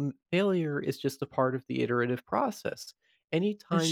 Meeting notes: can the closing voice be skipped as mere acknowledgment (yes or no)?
yes